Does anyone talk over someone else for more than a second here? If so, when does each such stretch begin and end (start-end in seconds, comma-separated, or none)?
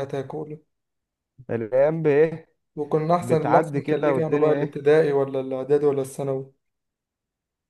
3.2-4.8